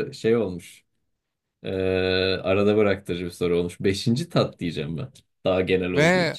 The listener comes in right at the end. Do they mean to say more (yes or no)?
yes